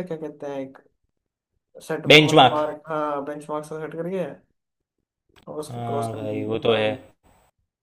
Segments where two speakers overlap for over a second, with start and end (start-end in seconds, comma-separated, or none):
5.7-6.9